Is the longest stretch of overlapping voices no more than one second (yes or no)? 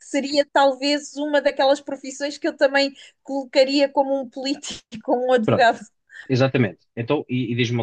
yes